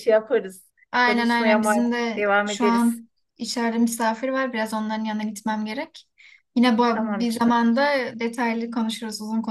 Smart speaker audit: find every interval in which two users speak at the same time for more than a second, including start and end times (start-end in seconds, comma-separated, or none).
0.9-3.0